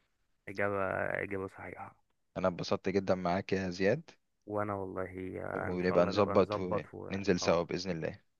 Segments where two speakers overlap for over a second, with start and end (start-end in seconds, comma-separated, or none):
5.5-7.6